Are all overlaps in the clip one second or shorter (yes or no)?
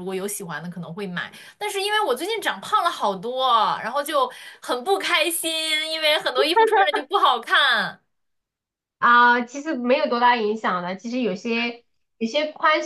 yes